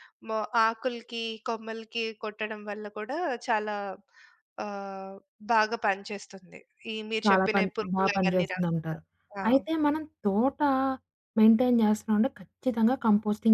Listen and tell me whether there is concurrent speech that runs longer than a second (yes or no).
yes